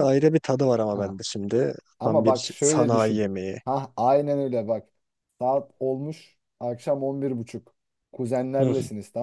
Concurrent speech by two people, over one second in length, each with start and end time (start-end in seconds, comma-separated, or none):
2.0-3.3